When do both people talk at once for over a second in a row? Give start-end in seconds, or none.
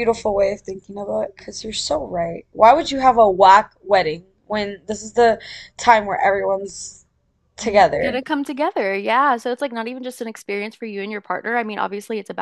none